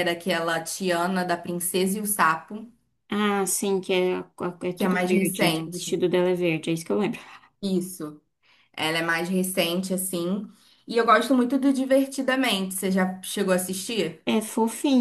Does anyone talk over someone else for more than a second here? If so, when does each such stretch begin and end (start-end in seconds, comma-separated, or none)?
4.7-6.0